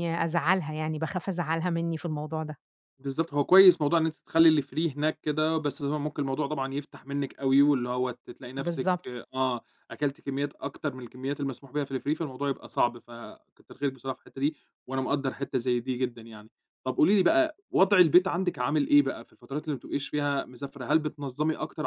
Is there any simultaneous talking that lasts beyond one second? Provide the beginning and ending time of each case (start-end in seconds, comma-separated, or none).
none